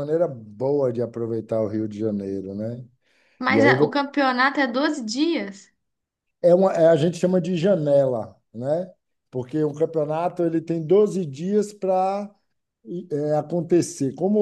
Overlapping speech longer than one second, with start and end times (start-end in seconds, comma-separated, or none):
none